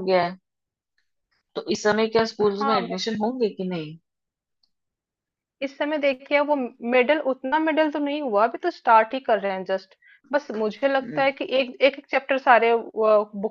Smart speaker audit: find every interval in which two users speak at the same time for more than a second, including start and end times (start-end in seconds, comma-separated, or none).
none